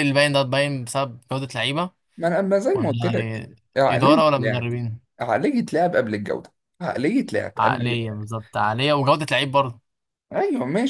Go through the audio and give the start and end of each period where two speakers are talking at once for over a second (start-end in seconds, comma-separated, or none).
2.7-4.7